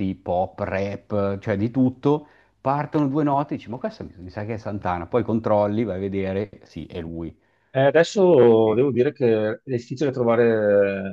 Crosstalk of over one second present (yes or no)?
no